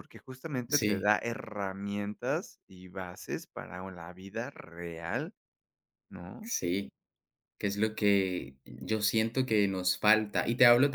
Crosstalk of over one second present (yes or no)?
no